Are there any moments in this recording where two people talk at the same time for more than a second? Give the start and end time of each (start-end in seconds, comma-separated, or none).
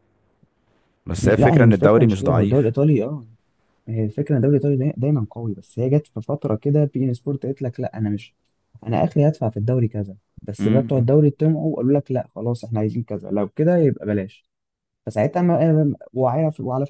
1.2-2.7